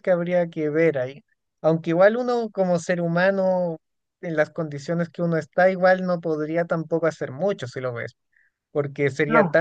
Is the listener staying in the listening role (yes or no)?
yes